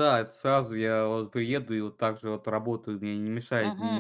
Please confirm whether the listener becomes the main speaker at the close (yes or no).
yes